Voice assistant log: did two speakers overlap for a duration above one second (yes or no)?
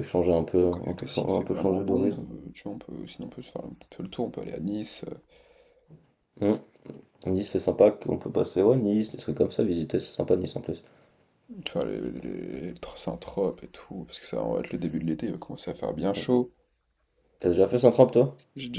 yes